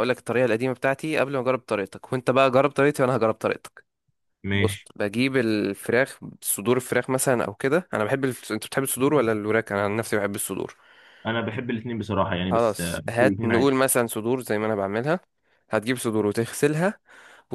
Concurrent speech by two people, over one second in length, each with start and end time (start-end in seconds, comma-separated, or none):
12.5-13.7